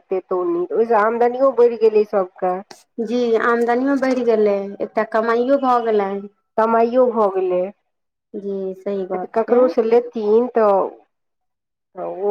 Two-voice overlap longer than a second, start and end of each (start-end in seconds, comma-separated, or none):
none